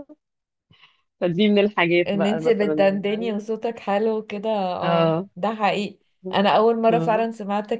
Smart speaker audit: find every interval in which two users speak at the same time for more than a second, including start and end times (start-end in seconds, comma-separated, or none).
2.1-3.4